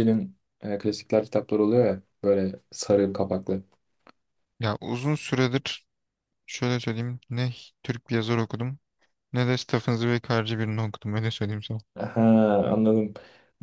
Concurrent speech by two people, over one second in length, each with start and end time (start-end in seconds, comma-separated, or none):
none